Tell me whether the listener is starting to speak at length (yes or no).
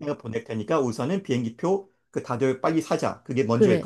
yes